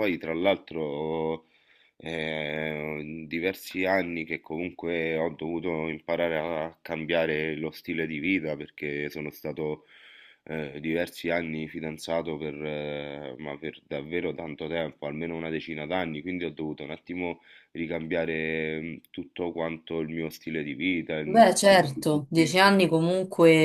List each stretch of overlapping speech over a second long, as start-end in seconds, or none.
21.2-22.6